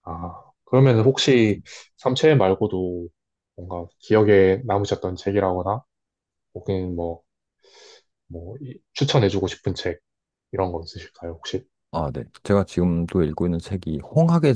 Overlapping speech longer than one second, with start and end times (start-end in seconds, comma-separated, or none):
none